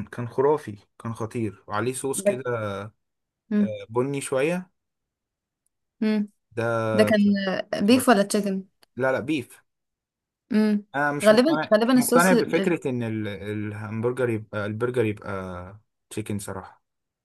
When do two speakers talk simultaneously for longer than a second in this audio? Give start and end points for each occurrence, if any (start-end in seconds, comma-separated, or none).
11.2-12.8